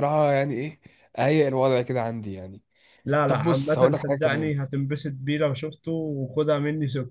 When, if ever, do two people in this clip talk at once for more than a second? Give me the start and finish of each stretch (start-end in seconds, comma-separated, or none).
3.3-4.5